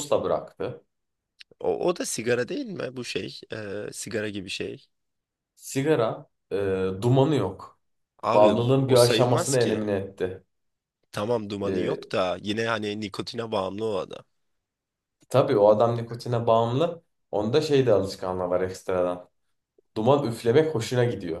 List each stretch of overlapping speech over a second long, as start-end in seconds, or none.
8.3-9.8